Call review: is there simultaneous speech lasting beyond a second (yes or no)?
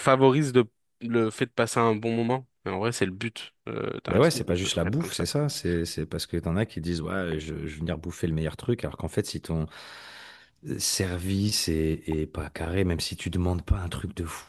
yes